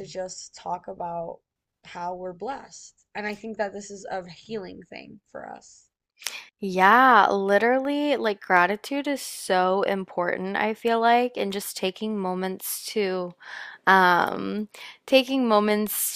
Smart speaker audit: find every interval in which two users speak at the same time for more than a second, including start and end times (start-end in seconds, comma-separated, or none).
none